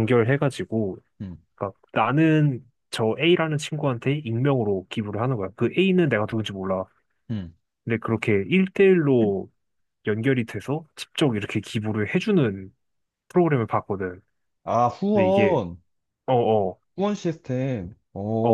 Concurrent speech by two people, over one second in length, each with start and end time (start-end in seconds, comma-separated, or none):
none